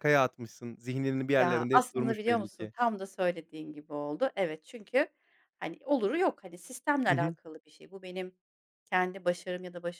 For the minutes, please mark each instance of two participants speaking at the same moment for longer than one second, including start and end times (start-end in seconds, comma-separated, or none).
1.4-2.7